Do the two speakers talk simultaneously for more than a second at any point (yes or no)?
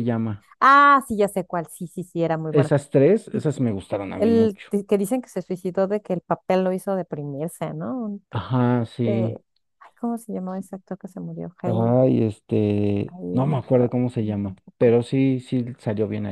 yes